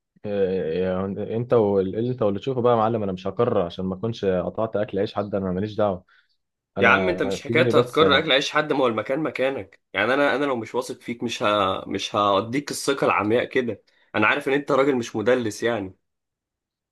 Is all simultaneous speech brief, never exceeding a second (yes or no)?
no